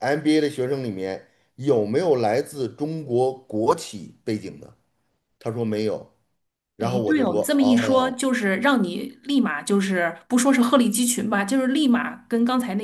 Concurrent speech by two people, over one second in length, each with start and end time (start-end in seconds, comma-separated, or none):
6.8-8.1